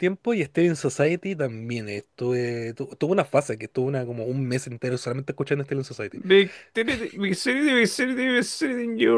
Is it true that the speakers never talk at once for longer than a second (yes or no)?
yes